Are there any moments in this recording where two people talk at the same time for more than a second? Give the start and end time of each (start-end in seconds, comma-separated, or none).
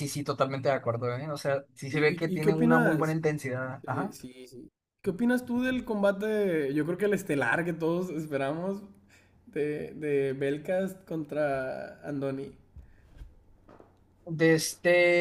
1.9-3.2